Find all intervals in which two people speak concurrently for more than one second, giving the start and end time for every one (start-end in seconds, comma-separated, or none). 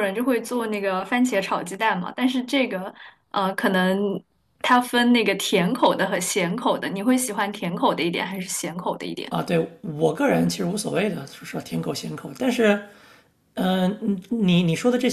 none